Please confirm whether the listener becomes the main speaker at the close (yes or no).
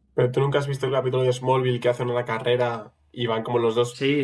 yes